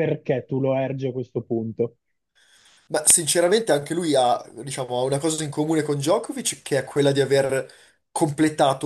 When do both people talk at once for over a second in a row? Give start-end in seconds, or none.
none